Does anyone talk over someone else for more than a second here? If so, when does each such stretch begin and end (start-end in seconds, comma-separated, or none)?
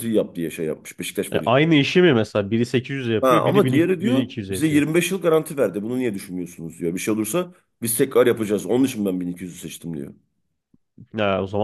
3.2-4.8